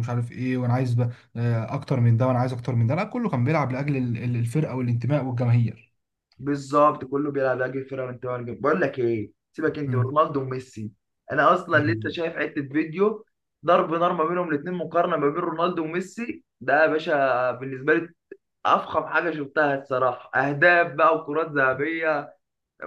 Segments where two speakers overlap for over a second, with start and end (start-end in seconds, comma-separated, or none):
none